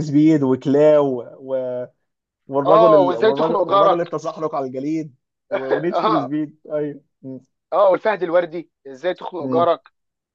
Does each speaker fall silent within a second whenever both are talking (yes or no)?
no